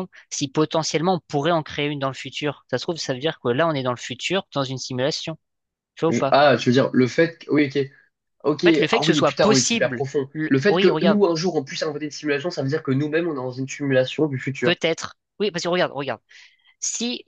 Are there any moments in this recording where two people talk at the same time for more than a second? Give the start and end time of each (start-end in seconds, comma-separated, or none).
8.6-11.2